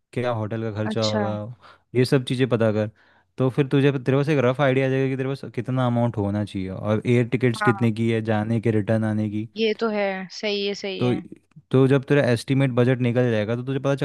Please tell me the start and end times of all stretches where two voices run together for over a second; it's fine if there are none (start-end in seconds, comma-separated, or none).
none